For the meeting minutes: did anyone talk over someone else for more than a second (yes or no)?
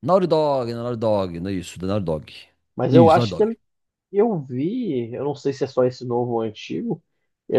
no